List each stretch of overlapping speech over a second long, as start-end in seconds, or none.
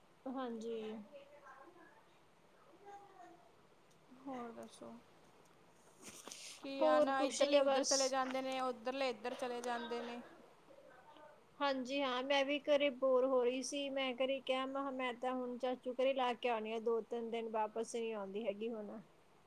6.8-8.1